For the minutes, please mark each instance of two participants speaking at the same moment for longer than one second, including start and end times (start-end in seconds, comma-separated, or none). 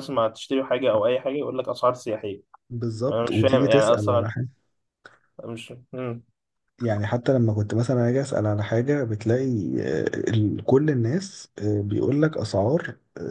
3.1-4.3